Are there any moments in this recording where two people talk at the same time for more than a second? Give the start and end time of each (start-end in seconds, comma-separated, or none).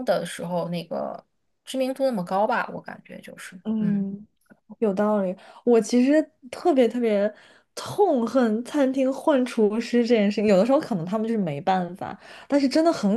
none